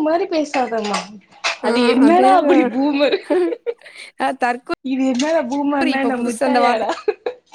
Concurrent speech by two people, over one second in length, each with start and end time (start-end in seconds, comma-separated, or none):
none